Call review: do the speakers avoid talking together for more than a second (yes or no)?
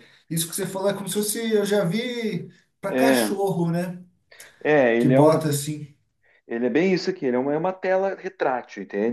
yes